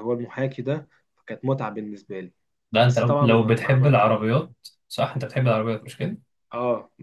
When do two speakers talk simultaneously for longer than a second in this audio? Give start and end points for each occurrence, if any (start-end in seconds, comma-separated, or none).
2.8-4.3